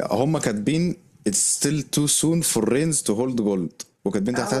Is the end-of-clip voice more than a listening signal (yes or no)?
no